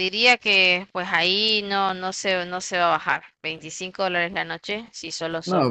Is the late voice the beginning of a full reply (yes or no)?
yes